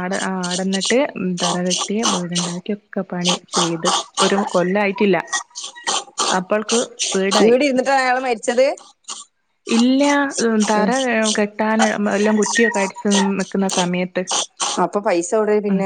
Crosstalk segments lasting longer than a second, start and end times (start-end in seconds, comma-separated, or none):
none